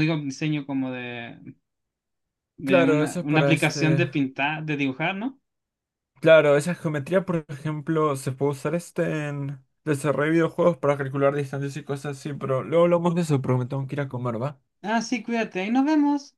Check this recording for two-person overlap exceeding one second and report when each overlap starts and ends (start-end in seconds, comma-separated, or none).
2.6-4.0